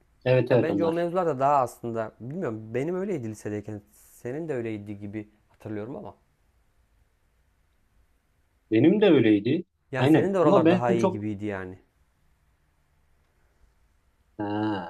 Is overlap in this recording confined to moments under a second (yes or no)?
no